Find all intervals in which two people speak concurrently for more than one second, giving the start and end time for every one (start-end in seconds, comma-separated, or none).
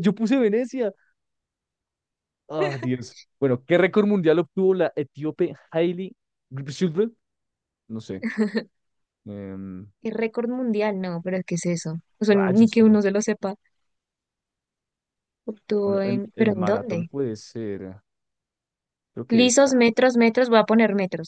15.8-17.1